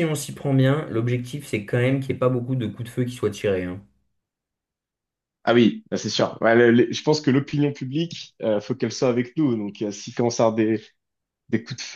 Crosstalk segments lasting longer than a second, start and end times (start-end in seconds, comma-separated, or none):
none